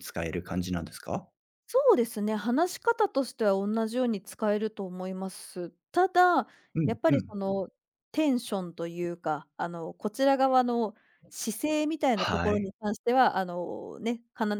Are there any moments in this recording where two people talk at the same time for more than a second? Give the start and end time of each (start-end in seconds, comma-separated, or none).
none